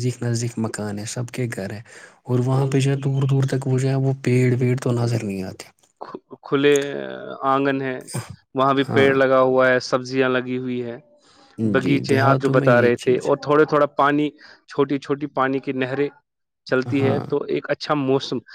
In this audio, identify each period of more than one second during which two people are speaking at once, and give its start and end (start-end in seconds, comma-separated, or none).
11.8-13.3